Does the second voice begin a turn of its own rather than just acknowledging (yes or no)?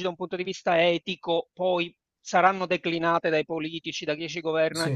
no